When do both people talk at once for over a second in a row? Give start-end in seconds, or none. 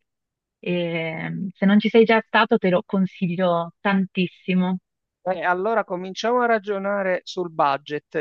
none